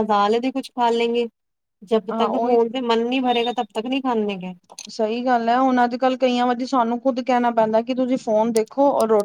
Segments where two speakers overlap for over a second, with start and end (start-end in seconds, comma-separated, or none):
none